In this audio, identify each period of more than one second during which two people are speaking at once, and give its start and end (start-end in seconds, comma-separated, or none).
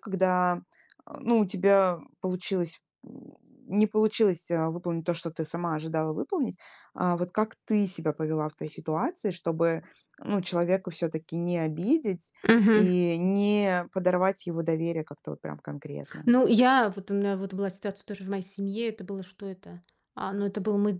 none